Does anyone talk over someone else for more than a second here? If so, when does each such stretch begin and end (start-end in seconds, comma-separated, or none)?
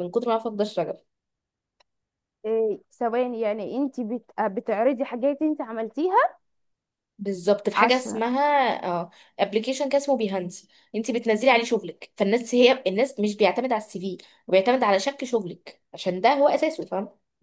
none